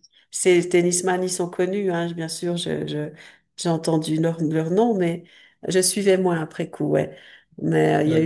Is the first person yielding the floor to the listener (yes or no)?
no